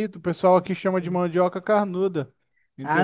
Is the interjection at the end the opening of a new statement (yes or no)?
yes